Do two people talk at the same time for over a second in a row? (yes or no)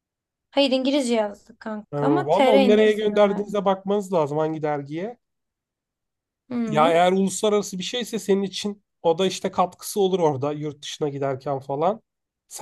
yes